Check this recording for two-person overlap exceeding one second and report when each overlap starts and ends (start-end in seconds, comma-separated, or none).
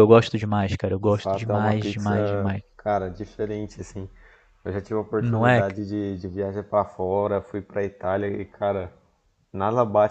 1.0-2.6